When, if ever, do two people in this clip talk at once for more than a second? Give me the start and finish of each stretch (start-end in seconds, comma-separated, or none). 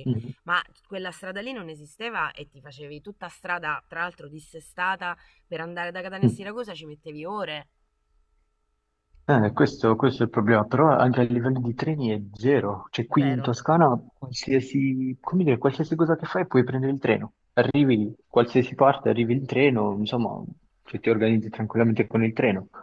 none